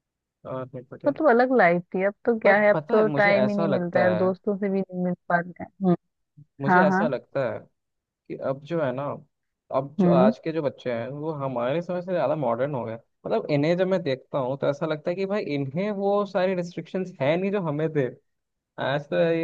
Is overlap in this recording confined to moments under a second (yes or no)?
no